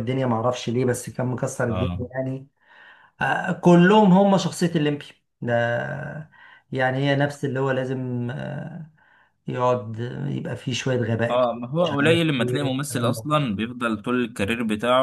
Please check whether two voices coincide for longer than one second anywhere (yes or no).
yes